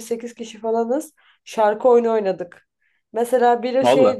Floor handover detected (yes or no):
no